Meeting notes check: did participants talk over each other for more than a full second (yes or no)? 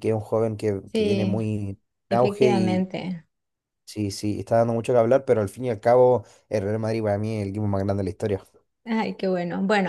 no